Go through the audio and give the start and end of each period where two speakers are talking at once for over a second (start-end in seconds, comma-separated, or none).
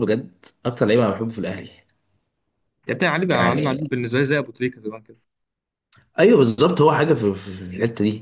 none